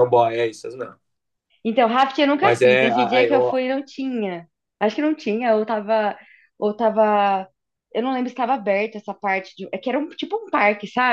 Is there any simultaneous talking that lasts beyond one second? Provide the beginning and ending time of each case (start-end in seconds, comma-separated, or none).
2.4-3.6